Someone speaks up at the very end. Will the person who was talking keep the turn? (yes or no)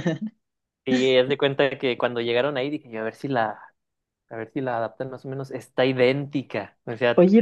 no